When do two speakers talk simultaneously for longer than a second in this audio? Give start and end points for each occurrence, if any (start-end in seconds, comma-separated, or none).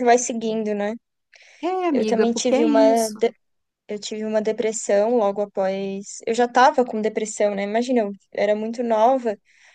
1.9-3.2